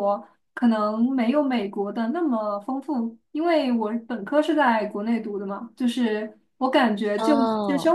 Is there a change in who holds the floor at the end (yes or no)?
no